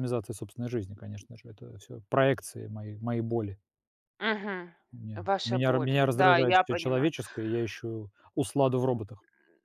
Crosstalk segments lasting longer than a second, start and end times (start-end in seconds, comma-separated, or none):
5.1-7.1